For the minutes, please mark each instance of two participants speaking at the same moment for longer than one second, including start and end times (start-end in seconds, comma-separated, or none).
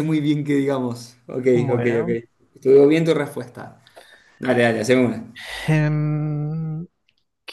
none